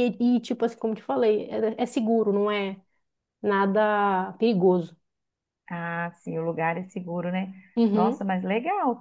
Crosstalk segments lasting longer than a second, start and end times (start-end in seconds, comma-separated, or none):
none